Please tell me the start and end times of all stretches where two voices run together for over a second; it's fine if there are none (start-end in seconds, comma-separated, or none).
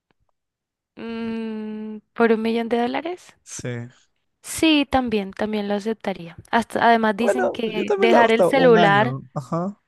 7.2-9.2